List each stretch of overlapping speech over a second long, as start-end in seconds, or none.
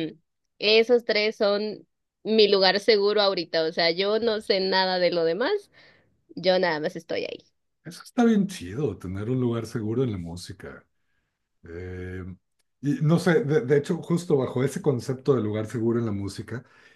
none